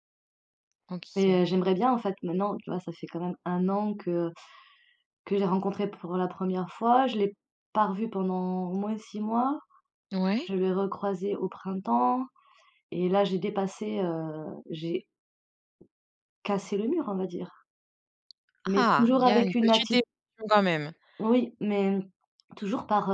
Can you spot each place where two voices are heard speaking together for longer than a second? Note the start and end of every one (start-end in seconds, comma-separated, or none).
18.8-20.0